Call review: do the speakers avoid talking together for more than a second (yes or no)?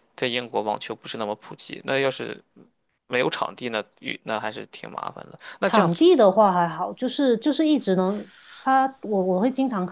yes